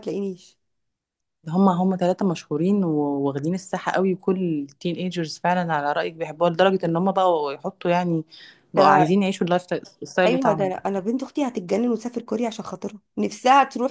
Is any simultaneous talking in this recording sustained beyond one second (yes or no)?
no